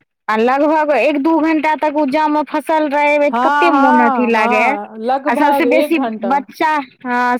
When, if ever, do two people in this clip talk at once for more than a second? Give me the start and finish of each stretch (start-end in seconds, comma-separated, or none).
3.3-6.4